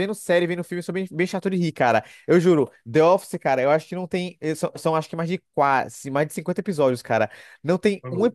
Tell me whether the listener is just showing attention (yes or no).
yes